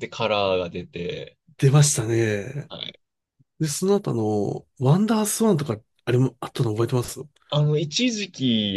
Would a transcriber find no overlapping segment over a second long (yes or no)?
yes